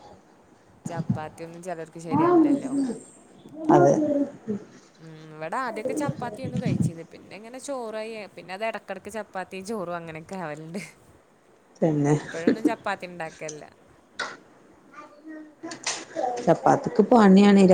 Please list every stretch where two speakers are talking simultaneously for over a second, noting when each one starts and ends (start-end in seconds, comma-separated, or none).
none